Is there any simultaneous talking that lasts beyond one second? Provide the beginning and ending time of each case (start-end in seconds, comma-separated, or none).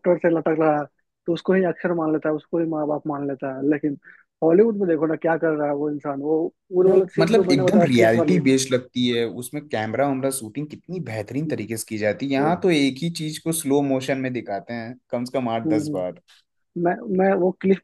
6.9-8.4